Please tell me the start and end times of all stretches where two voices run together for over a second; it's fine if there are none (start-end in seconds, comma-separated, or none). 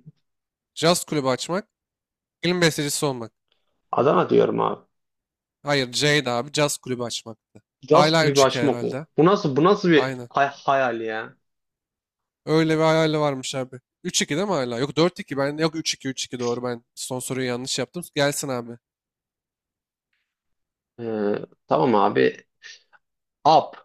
7.8-9.1